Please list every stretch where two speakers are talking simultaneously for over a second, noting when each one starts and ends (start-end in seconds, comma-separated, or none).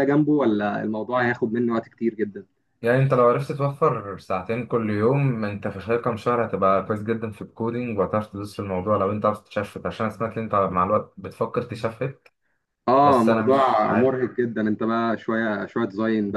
13.0-14.2